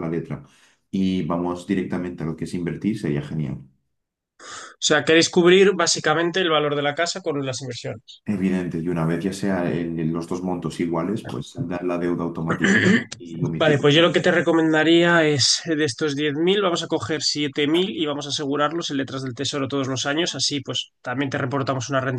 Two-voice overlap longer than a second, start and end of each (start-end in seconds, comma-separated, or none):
none